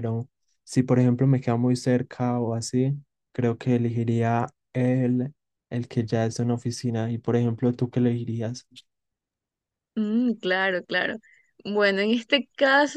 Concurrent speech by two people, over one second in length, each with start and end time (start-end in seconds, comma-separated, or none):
none